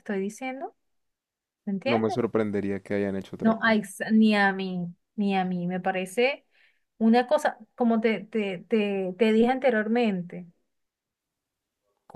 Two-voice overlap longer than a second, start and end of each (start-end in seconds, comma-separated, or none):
none